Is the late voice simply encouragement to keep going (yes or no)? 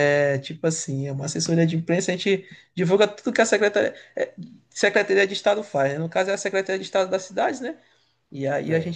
yes